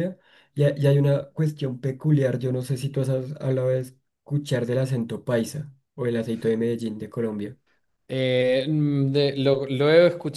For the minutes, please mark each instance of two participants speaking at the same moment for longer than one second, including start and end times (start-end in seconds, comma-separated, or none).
none